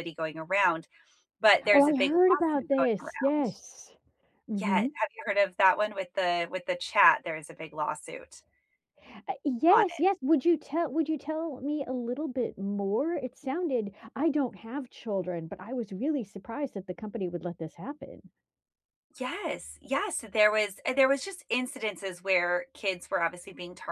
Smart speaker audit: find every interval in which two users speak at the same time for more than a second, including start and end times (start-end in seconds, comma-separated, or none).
1.7-3.5